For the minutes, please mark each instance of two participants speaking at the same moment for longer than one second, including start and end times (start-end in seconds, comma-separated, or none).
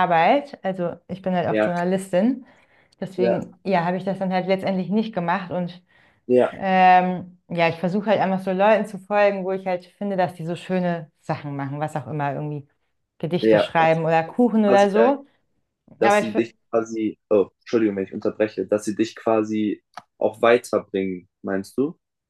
13.4-15.1